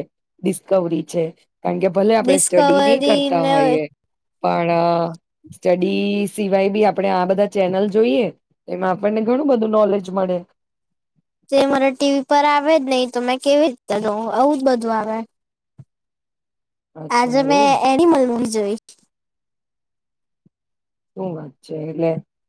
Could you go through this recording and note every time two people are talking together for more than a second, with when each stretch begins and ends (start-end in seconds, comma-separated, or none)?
2.2-3.5